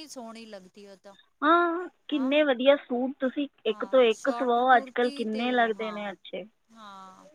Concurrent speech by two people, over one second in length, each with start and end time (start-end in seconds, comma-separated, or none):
3.7-6.0